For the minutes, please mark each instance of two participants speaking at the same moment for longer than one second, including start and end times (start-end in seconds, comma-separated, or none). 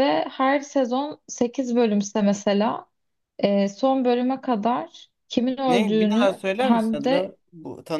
5.7-7.3